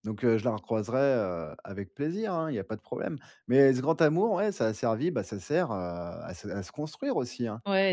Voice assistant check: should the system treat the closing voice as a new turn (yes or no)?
yes